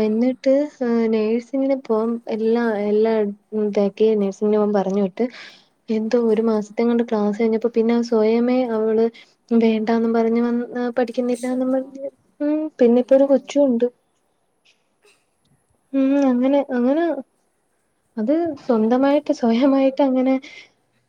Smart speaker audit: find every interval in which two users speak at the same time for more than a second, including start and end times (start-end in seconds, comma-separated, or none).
none